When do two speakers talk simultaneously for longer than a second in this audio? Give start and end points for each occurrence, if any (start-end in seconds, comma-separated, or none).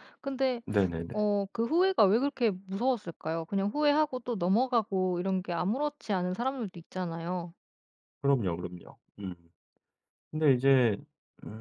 none